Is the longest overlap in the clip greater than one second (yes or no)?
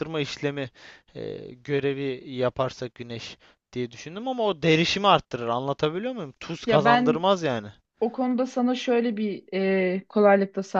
no